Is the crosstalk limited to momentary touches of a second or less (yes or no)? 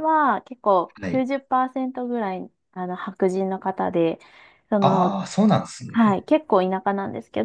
yes